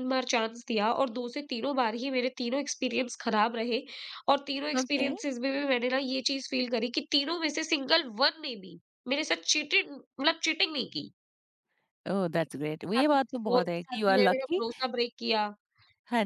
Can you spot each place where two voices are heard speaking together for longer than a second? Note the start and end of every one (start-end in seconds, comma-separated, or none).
12.9-14.6